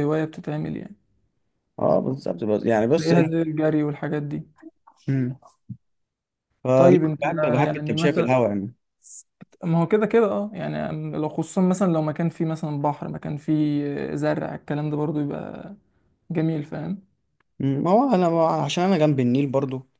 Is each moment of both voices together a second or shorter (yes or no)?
no